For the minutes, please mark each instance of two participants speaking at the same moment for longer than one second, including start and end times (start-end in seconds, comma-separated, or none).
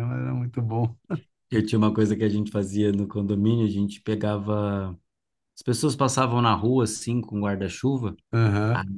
none